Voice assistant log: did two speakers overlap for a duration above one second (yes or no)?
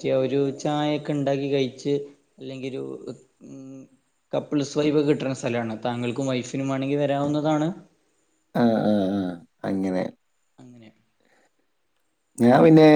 no